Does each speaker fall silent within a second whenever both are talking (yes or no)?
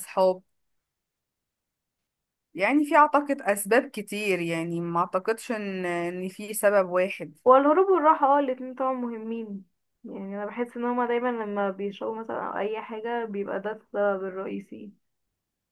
yes